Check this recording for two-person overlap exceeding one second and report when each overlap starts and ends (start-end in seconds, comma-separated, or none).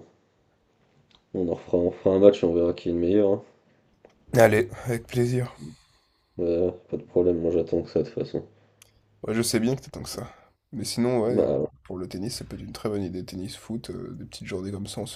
none